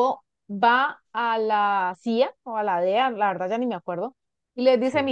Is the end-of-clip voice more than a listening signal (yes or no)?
no